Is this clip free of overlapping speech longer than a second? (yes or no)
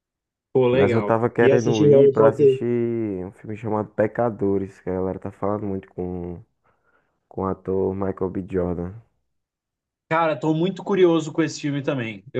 no